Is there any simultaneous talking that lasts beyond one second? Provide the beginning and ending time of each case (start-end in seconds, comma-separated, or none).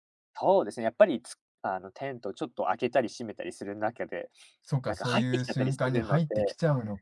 4.8-6.2